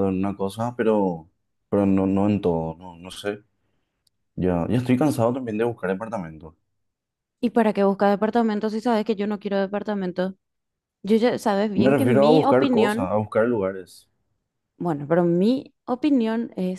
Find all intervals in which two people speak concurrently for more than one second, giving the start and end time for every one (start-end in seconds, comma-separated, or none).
11.7-13.2